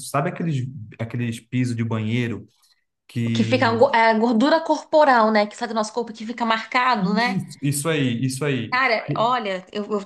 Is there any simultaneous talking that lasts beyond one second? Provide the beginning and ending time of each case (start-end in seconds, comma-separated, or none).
none